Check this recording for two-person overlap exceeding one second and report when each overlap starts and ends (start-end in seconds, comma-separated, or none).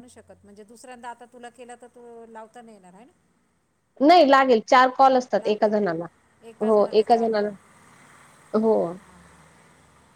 none